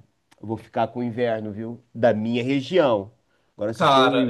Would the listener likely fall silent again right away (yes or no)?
yes